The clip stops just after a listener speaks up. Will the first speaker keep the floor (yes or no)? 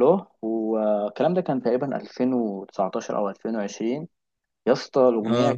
yes